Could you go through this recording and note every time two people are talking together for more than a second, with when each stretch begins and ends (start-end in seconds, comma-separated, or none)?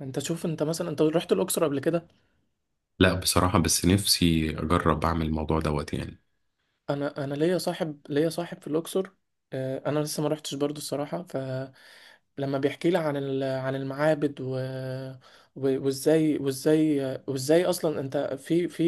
none